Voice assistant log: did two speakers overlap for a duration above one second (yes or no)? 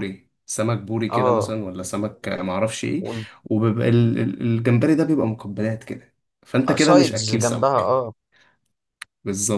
yes